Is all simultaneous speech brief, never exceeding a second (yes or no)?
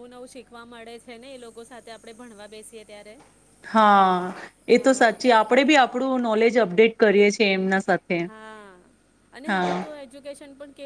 yes